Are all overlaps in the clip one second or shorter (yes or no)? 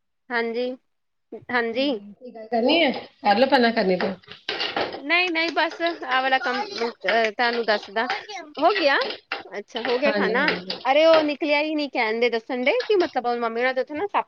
yes